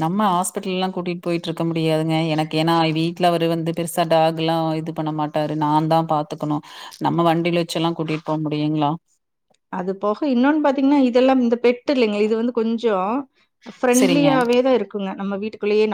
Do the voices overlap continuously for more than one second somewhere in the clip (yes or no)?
no